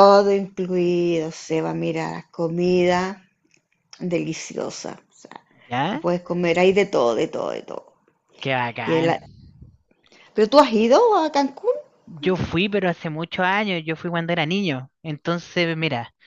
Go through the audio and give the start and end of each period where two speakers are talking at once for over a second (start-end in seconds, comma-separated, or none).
none